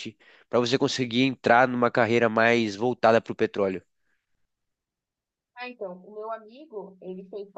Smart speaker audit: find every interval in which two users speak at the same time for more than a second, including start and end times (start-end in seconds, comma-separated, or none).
none